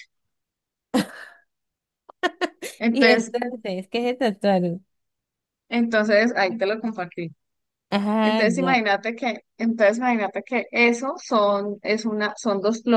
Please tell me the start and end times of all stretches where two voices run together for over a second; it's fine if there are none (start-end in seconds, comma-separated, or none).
none